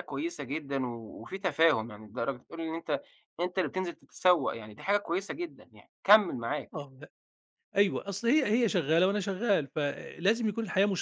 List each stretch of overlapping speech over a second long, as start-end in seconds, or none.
none